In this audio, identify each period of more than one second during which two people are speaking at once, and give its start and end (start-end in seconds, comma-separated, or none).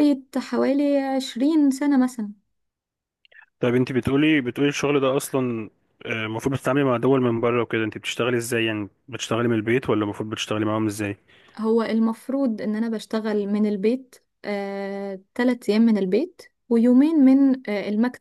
none